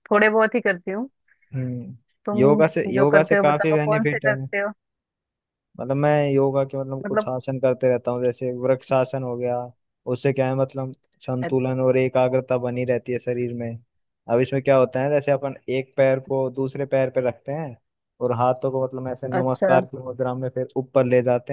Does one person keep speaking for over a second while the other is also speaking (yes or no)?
yes